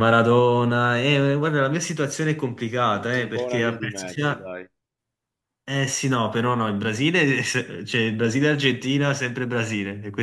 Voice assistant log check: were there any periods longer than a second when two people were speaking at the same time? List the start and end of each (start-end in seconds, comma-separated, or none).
2.9-4.5